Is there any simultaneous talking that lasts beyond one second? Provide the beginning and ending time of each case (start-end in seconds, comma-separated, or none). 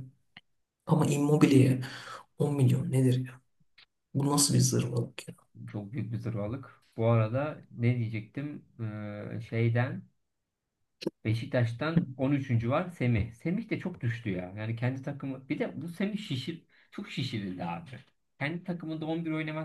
none